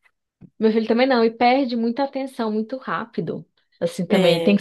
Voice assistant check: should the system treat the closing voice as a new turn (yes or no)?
no